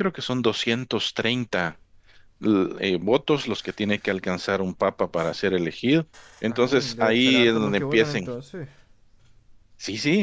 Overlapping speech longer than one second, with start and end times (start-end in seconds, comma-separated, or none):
6.5-8.3